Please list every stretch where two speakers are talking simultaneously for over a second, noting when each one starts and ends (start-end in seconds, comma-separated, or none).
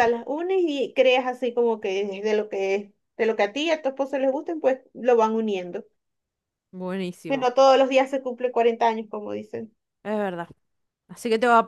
none